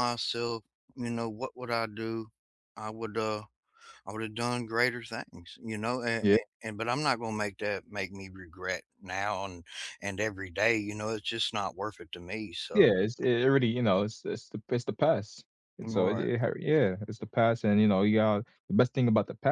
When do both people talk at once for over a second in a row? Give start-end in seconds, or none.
none